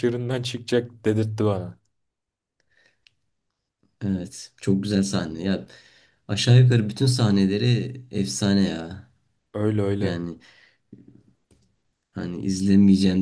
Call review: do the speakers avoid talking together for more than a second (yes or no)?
yes